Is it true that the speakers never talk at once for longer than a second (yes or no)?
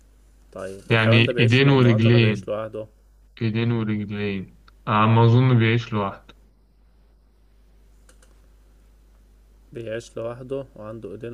no